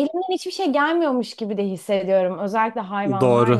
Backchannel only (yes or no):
no